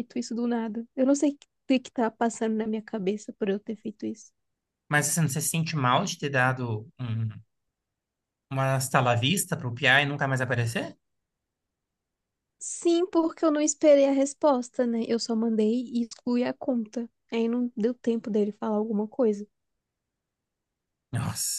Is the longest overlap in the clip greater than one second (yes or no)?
no